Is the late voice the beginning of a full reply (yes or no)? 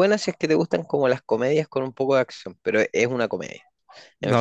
no